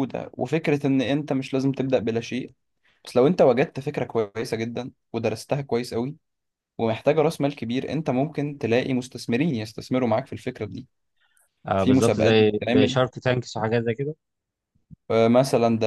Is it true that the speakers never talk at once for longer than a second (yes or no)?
no